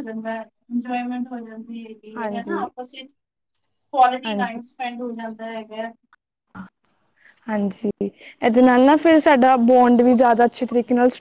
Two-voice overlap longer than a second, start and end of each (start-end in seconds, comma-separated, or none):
none